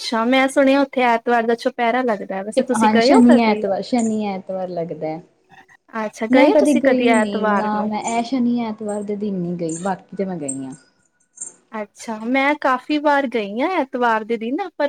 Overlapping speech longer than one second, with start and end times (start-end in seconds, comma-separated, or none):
6.3-7.9